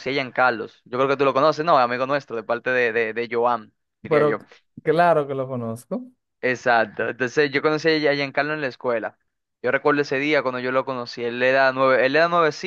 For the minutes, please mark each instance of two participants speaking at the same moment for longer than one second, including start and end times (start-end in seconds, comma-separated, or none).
none